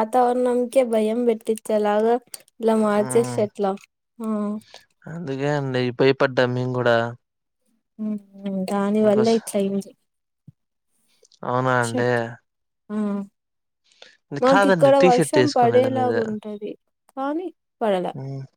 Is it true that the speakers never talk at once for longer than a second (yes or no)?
no